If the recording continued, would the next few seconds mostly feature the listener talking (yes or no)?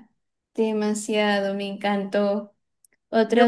yes